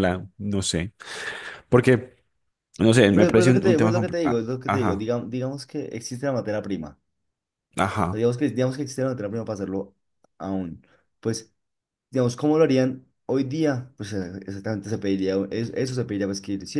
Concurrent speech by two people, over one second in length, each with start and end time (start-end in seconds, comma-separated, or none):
3.1-5.1